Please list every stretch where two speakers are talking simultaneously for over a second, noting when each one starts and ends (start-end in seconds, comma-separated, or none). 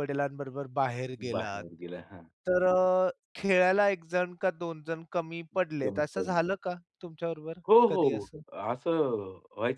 none